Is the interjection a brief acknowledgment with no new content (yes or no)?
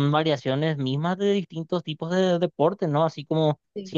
yes